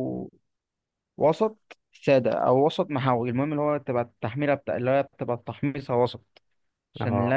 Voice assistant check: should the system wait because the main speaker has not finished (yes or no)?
yes